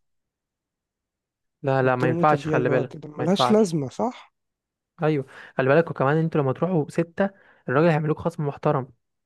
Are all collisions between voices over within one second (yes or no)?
no